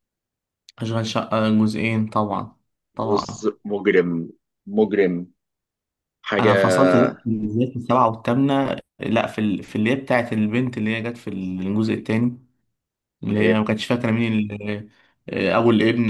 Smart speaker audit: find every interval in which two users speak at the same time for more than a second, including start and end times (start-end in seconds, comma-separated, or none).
none